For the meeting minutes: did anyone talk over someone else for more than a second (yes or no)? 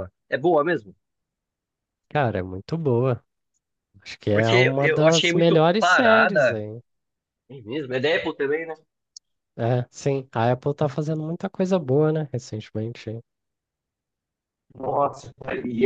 yes